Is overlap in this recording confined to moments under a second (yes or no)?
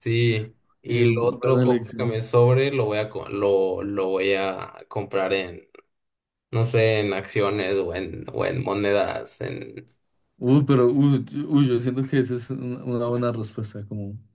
no